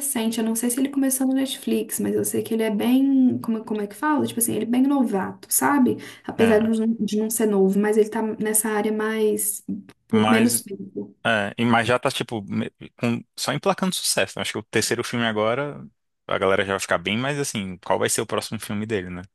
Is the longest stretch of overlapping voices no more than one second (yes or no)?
yes